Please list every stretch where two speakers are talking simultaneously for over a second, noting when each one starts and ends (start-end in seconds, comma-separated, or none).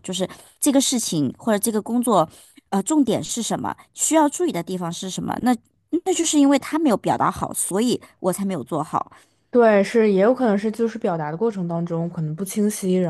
none